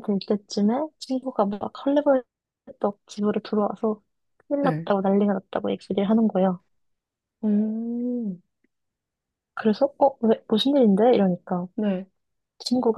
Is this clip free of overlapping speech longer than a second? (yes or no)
yes